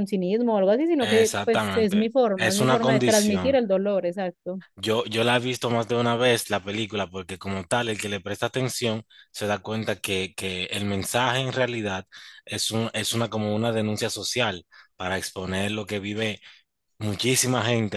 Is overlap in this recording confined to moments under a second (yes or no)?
no